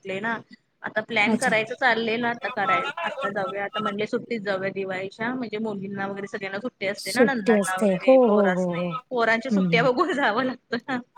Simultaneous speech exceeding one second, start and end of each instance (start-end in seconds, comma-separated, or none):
7.0-8.9